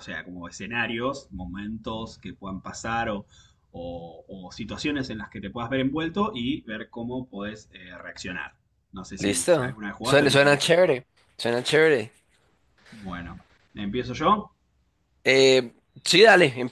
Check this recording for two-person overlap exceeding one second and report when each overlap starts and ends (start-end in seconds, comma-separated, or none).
9.2-10.7